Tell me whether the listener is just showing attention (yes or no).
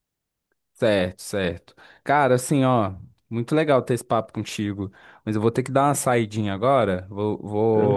yes